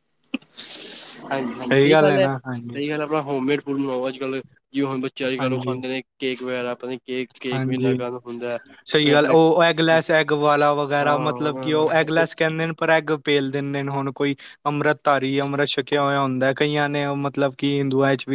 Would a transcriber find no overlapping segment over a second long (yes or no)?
no